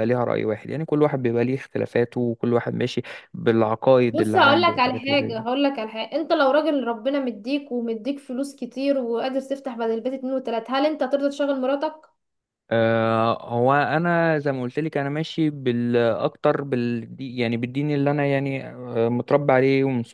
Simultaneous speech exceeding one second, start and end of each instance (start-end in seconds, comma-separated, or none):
4.1-5.5